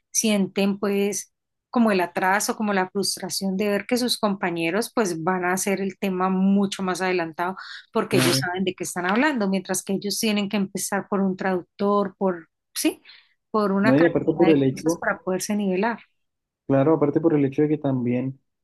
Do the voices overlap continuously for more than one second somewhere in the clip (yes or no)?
yes